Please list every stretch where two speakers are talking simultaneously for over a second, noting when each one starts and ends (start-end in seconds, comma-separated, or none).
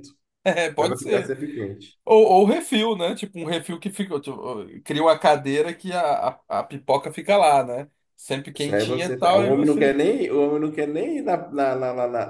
8.6-9.9